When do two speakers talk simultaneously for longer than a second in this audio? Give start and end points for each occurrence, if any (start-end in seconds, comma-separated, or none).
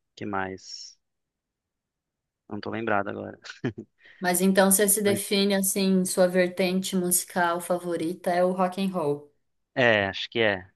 none